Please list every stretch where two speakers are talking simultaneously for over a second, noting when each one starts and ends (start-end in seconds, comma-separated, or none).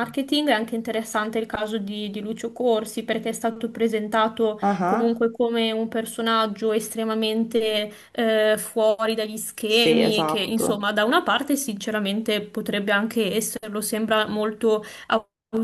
9.7-10.9